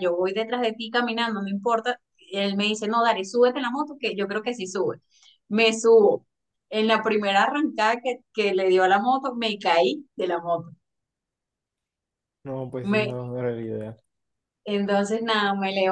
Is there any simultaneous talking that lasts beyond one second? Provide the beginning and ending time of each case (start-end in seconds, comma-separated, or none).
none